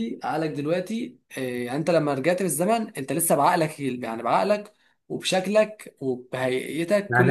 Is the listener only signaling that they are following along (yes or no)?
no